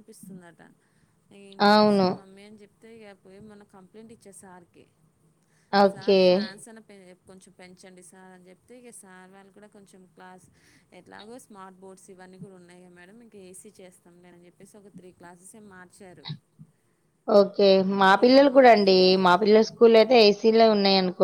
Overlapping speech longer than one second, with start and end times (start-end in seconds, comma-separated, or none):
none